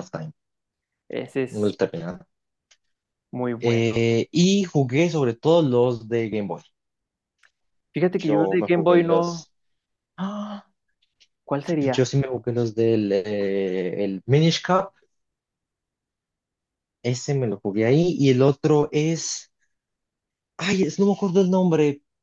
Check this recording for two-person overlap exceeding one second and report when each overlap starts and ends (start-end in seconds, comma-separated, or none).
8.2-9.5